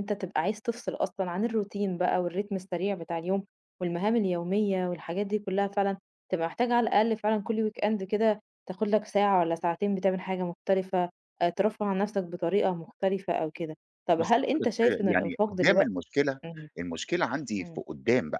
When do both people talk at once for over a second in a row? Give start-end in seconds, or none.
14.2-15.9